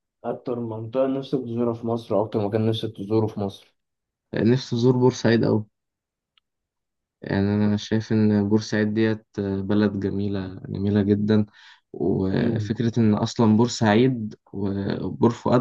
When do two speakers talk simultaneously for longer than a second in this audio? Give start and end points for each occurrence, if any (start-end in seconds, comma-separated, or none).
none